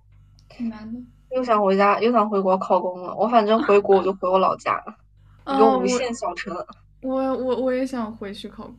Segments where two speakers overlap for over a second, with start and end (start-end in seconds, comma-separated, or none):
none